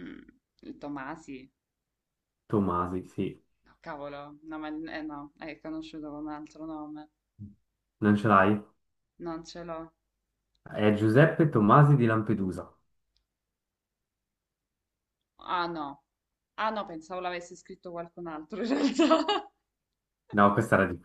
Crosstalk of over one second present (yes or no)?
no